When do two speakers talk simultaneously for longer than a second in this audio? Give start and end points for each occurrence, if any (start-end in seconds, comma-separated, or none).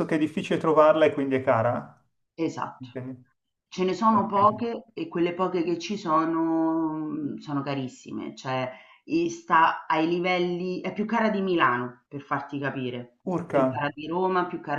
none